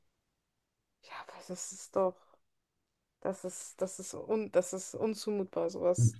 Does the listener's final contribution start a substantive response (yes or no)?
yes